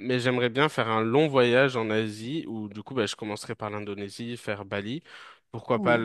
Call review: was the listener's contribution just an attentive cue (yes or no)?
yes